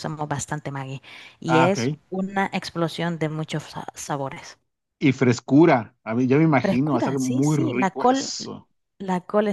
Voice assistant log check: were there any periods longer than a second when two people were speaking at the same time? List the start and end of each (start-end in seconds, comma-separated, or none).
6.6-8.3